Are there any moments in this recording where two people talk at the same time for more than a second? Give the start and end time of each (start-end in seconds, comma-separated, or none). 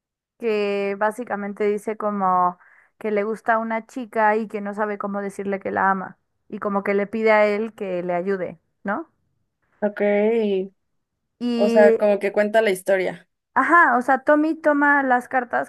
none